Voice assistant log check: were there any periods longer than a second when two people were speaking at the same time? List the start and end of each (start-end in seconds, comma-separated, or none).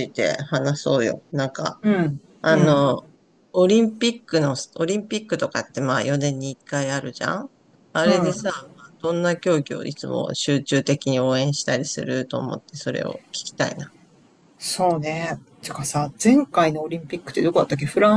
none